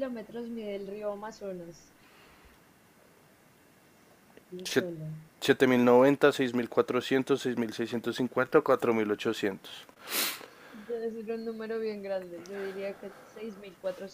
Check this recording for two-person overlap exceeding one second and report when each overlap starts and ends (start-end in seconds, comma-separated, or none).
none